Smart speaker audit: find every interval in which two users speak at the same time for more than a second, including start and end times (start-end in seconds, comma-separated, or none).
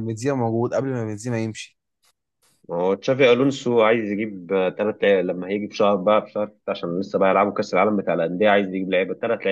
none